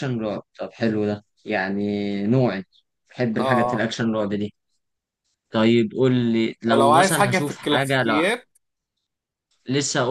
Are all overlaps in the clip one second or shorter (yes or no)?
no